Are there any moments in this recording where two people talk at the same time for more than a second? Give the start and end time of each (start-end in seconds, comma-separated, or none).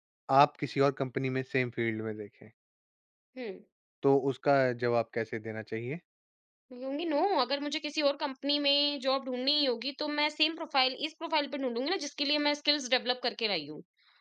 none